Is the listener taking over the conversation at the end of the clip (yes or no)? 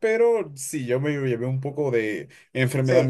yes